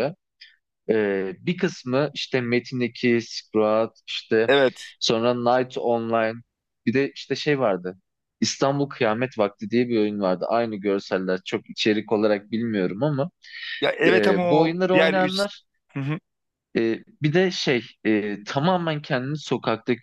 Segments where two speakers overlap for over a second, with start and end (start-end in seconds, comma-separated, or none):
14.1-15.4